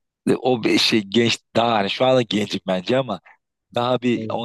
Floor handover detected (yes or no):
no